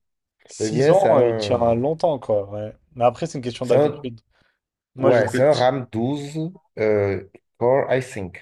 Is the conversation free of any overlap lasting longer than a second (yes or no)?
no